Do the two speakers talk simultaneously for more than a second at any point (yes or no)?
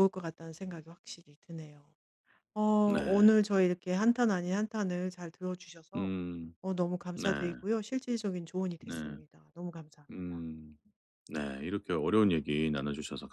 no